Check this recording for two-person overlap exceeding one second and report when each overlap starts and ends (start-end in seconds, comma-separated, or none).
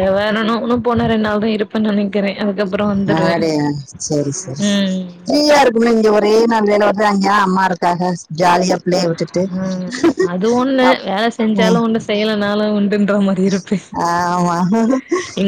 none